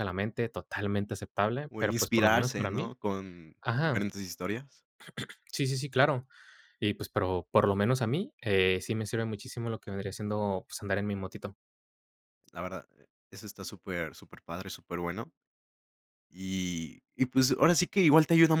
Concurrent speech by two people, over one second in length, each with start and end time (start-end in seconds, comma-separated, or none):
1.7-2.9